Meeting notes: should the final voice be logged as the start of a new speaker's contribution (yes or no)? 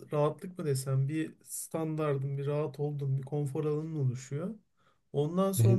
no